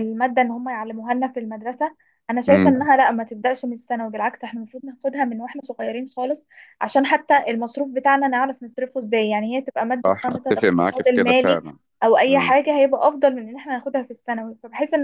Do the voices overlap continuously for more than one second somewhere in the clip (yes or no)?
yes